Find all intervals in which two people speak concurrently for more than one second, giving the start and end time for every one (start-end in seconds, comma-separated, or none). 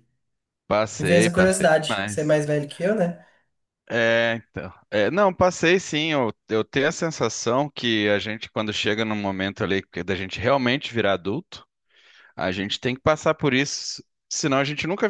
1.0-2.4